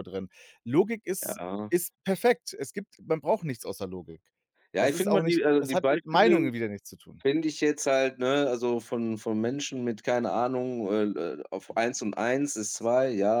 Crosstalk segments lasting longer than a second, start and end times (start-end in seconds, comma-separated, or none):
4.8-6.4